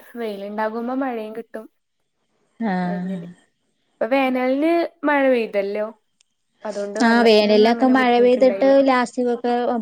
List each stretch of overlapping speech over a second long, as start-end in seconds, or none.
7.1-8.8